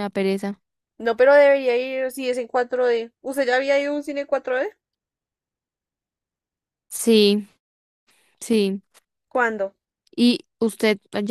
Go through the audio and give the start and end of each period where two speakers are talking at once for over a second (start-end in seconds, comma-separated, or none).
none